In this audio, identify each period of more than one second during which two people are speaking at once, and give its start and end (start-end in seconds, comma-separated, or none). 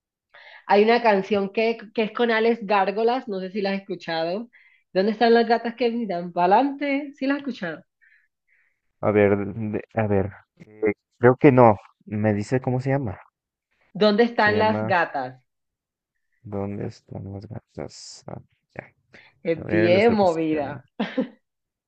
19.5-20.8